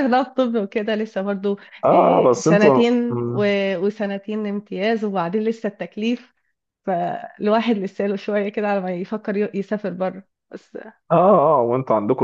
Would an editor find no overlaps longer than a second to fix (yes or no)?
no